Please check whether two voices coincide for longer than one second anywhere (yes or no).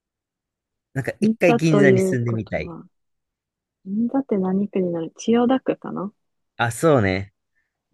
yes